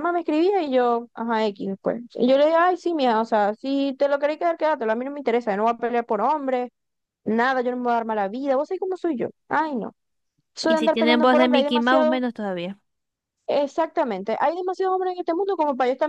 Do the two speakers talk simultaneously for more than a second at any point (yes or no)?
yes